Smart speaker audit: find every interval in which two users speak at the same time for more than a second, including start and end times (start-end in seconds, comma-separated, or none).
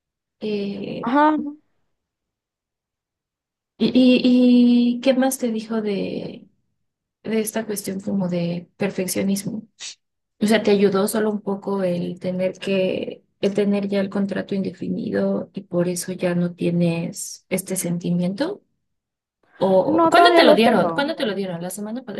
19.8-21.1